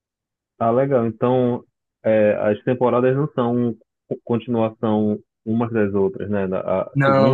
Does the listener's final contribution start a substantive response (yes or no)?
no